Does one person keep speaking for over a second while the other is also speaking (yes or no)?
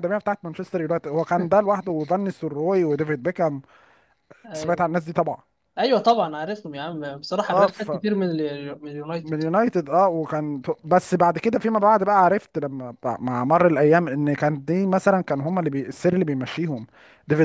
no